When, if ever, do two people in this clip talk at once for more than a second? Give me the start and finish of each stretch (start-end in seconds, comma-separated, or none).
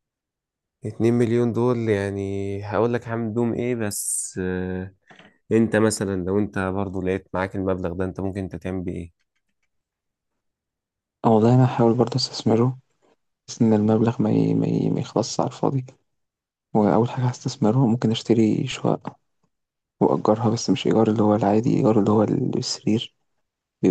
none